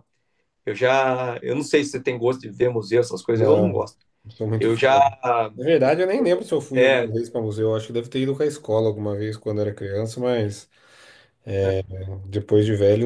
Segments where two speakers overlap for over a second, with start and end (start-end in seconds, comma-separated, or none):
none